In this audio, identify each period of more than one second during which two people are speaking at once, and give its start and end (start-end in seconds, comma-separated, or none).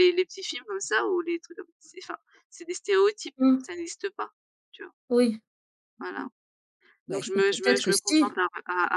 7.1-8.4